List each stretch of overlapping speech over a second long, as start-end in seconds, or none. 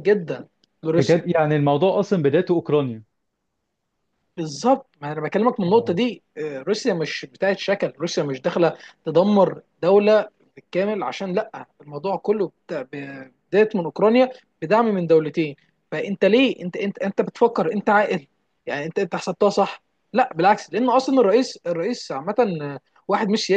none